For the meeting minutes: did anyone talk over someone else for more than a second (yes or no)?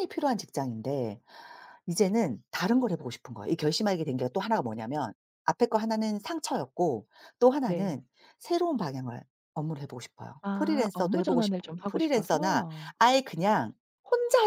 yes